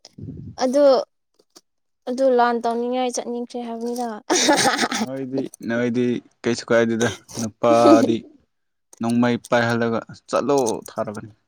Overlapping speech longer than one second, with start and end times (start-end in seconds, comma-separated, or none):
none